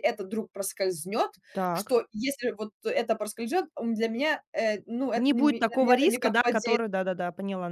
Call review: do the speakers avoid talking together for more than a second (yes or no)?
no